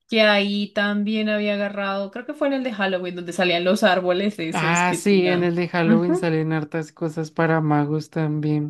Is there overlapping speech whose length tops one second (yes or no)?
yes